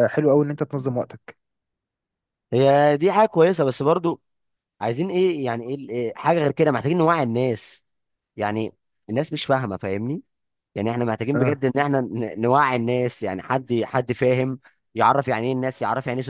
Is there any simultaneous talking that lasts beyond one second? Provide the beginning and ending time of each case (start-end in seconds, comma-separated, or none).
none